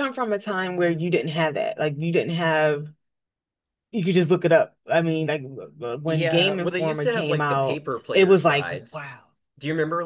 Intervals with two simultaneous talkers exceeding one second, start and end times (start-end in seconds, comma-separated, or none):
6.0-9.2